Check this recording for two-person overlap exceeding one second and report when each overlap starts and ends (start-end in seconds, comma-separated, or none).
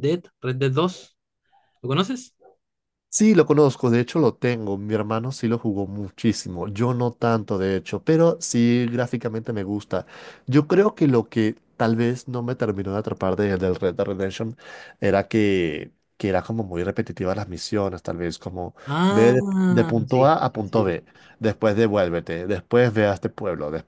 18.9-21.0